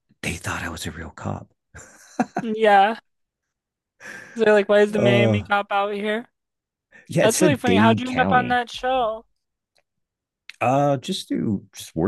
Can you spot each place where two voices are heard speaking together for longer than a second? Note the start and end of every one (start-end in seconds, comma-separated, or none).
7.2-8.6